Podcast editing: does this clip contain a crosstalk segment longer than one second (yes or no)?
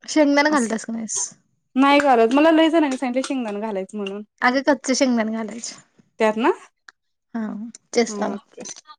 no